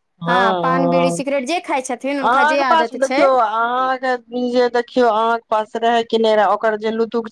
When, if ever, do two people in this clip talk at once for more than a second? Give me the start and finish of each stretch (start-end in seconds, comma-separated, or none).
none